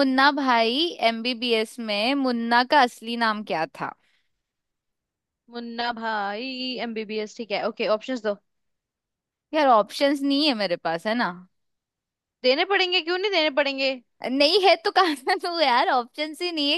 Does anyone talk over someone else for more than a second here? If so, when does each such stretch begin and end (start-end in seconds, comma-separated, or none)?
none